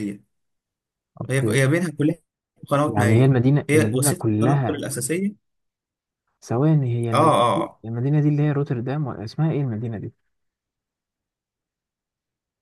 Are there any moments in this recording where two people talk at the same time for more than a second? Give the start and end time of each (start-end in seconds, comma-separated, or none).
2.9-4.8